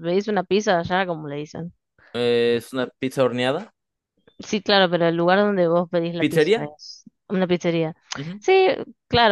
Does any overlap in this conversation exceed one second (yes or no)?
no